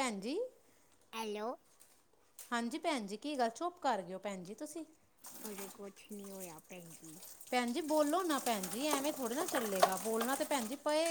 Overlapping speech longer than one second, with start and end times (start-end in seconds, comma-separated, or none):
none